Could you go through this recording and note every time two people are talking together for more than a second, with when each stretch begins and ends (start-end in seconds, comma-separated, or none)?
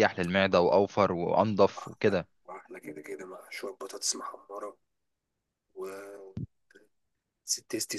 none